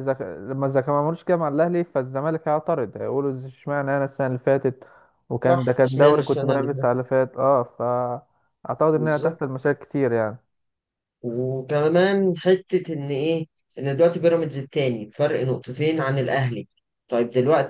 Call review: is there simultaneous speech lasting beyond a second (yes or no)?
yes